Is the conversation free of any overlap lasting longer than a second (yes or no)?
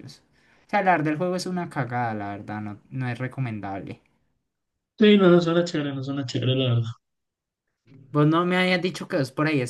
yes